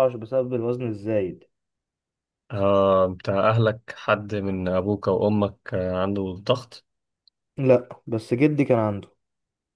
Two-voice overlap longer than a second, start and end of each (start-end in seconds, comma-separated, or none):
none